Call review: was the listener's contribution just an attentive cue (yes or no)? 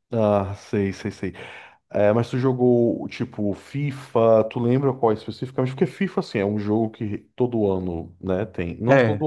yes